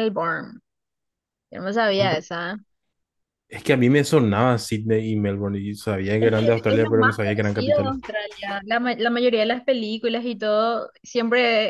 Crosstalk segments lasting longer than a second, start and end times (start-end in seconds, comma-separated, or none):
6.2-7.9